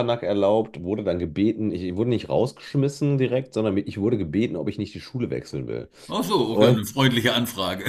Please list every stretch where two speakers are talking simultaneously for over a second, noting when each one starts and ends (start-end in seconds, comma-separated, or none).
none